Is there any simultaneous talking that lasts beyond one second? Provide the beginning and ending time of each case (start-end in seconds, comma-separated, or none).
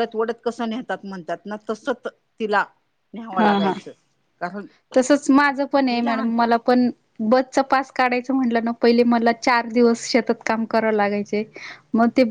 none